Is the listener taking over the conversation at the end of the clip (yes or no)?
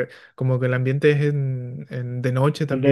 no